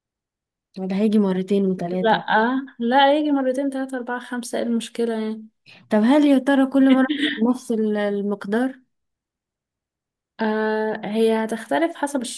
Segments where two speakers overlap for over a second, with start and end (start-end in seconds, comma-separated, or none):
none